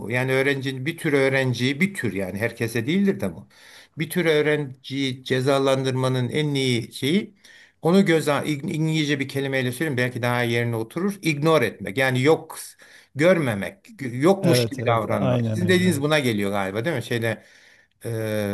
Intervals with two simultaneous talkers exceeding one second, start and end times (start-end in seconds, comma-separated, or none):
14.4-16.0